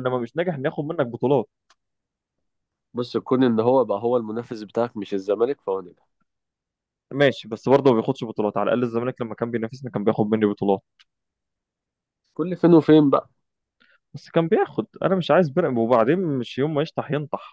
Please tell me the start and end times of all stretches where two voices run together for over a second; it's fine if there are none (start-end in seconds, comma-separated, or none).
none